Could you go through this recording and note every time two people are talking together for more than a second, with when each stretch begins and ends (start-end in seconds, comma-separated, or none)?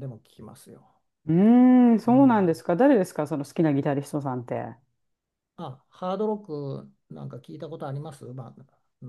none